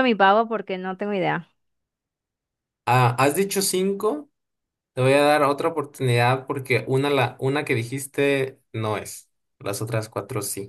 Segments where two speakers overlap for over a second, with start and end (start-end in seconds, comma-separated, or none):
none